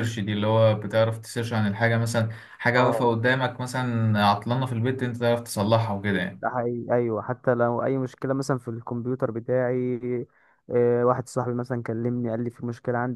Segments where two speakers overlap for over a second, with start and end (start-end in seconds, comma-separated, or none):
none